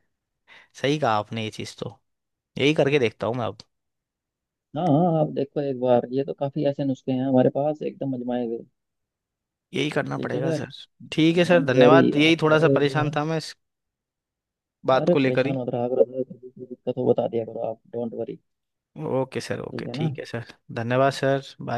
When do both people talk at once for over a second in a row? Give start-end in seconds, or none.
11.5-13.2